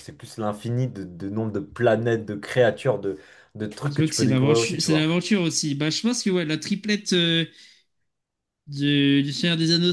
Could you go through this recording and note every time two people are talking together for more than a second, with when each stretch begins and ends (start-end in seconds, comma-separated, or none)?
3.9-5.2